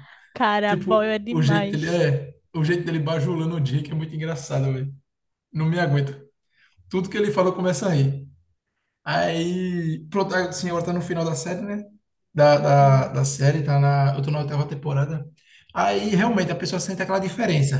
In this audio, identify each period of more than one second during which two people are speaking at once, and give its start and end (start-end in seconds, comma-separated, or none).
0.7-2.0